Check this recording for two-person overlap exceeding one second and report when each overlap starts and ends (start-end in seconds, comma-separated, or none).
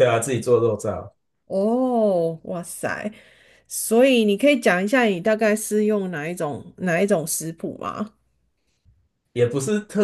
none